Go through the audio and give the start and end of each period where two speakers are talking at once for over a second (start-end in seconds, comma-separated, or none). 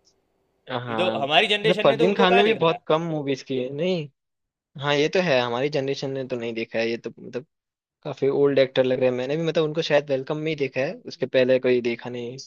0.7-2.8